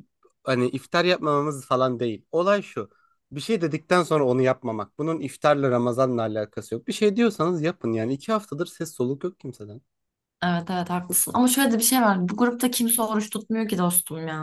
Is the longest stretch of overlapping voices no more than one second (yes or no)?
yes